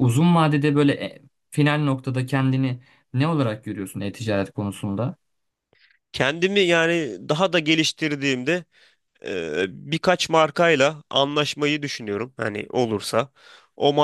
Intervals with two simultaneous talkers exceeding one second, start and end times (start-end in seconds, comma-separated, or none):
none